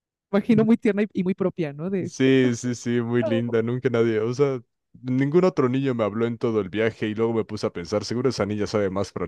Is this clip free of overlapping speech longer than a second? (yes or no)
yes